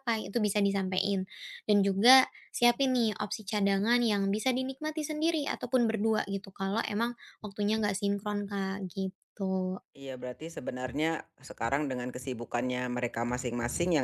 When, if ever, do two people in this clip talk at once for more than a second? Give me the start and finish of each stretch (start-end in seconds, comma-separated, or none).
none